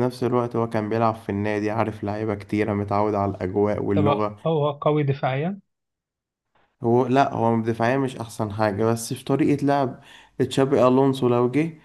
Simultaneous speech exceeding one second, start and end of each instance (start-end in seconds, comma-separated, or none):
none